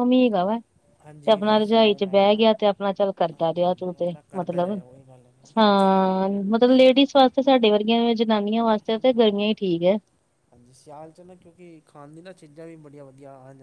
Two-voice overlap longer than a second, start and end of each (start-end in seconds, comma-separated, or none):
1.0-2.4, 3.3-4.8